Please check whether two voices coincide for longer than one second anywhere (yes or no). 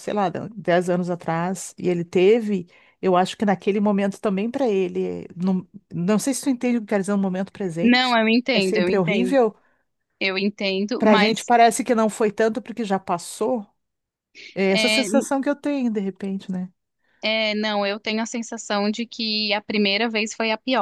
yes